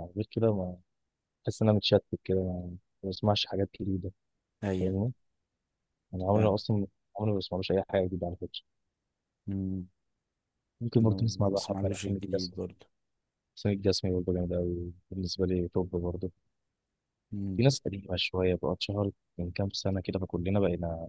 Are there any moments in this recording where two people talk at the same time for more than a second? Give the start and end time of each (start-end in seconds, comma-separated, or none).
11.0-12.6